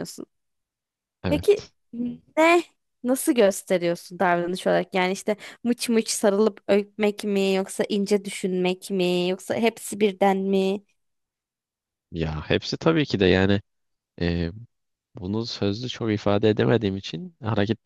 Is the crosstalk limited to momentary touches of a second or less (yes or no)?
yes